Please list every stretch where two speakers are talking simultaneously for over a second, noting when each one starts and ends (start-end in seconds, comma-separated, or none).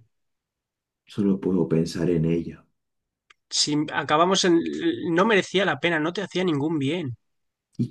none